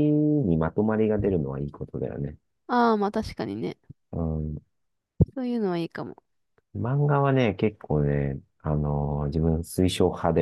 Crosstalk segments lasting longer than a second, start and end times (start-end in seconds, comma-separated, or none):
none